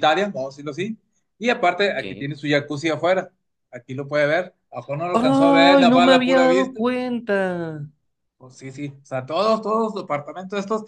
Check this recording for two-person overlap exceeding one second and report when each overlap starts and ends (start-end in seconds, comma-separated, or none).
5.1-6.8